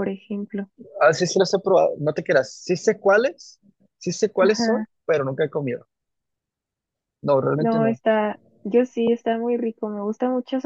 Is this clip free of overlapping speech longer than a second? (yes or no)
yes